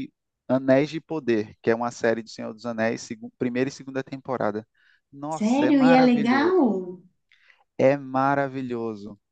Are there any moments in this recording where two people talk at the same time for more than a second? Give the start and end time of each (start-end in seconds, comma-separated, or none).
5.3-6.6